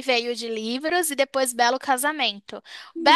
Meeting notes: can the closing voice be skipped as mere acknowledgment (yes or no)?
yes